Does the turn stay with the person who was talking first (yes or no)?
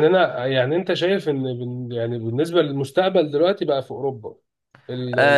no